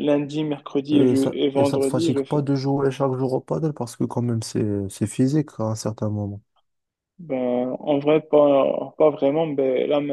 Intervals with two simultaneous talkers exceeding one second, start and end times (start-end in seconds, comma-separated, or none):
0.9-2.4